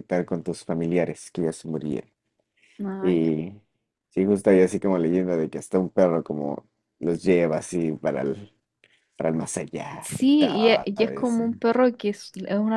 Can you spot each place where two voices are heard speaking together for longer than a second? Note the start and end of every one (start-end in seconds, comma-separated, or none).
10.0-11.4